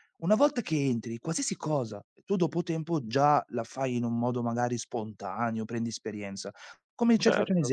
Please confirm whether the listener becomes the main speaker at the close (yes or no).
no